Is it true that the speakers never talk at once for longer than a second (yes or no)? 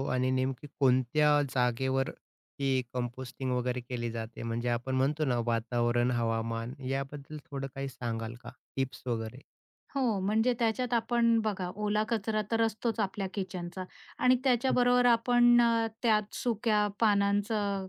yes